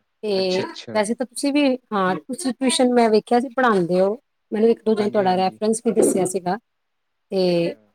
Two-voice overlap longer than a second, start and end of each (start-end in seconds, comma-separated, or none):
none